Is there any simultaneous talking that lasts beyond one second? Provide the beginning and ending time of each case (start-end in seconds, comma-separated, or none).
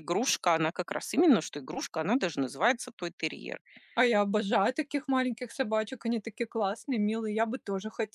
none